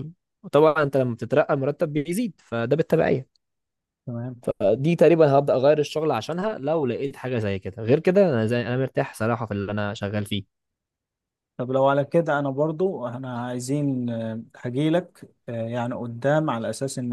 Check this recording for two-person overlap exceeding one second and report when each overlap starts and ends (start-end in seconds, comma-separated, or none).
none